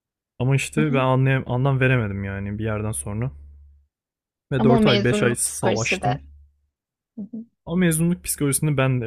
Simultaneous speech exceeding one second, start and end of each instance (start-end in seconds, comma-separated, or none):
4.6-6.1